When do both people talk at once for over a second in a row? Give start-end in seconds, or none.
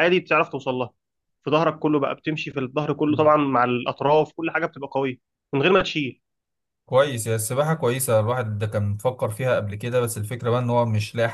none